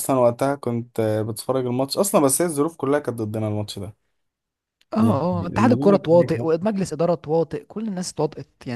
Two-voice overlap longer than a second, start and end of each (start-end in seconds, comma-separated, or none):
5.0-6.7